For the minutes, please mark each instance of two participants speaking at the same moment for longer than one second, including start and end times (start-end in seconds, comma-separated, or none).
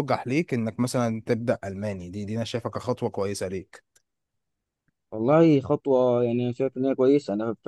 none